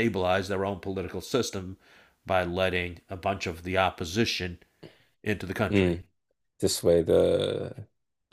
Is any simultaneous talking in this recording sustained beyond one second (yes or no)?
no